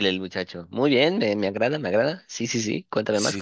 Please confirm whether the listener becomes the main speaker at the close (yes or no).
yes